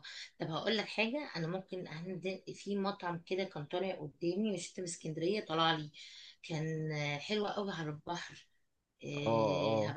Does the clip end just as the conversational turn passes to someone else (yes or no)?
no